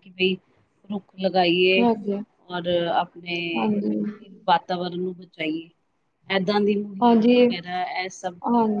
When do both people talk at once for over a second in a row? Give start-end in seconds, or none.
none